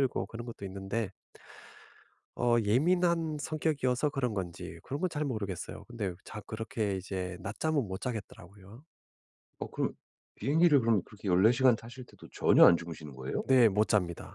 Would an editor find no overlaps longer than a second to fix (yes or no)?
yes